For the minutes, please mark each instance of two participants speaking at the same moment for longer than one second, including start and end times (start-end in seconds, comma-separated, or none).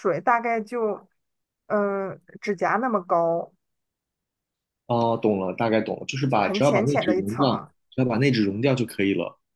6.3-7.7